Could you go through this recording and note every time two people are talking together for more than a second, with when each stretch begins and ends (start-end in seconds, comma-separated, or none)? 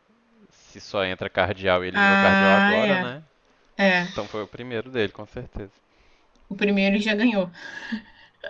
1.9-3.2